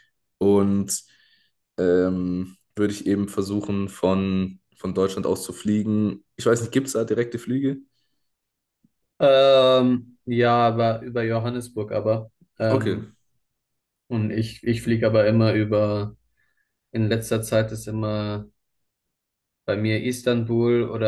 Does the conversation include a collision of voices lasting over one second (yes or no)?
no